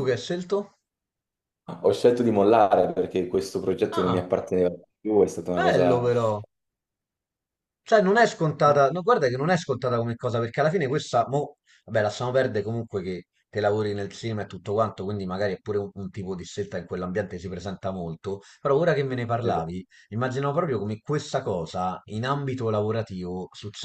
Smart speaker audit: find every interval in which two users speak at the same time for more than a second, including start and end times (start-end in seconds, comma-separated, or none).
none